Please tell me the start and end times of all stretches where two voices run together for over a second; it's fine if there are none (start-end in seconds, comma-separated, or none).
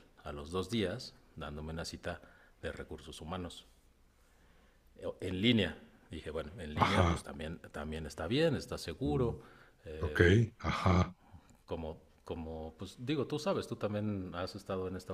none